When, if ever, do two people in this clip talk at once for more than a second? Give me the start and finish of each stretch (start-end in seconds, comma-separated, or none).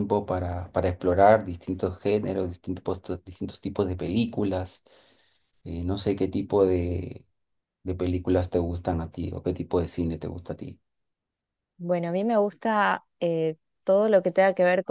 none